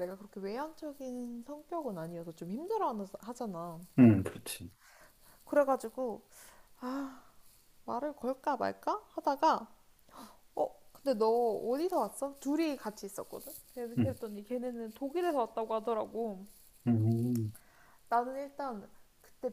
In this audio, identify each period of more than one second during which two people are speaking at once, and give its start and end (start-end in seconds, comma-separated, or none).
none